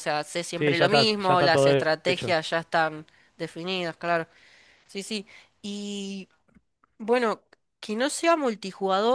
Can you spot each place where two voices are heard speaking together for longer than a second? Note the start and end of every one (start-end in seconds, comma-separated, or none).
0.6-2.4